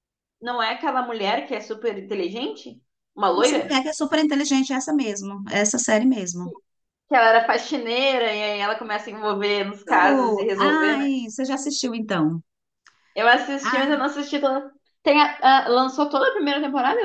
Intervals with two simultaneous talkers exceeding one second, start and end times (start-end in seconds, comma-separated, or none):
9.9-11.1